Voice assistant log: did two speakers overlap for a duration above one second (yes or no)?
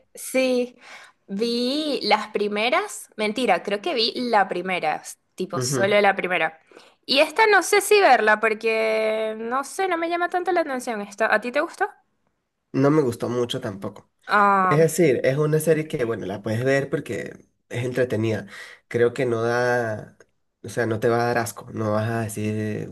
no